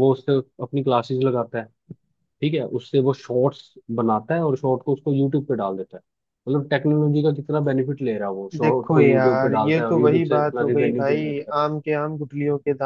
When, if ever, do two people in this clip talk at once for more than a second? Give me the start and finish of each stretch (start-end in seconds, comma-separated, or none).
8.6-11.5